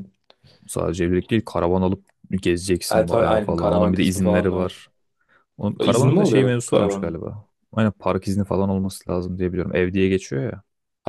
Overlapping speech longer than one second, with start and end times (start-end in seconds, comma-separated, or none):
2.9-4.8, 5.8-7.2